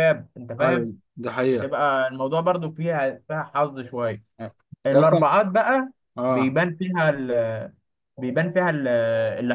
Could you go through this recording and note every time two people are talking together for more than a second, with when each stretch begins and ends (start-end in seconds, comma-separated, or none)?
none